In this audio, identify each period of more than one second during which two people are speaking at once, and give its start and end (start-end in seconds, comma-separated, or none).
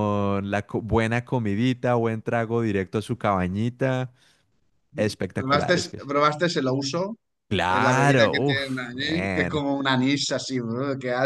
7.8-9.6